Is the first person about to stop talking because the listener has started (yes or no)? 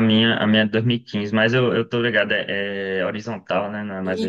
yes